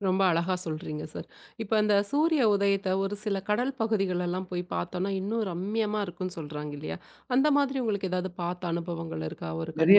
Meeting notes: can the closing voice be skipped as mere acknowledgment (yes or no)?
no